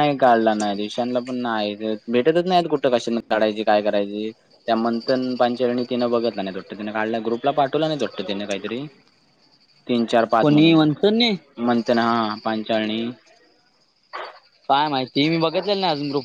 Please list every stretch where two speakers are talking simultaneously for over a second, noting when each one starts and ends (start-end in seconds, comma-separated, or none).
none